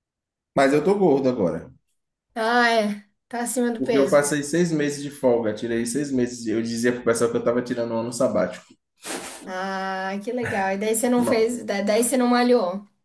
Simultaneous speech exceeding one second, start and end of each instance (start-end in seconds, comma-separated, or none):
none